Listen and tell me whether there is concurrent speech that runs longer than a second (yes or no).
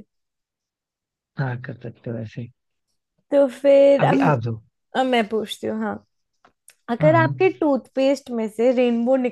no